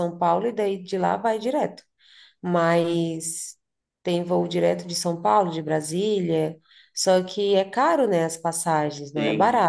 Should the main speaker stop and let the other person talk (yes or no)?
yes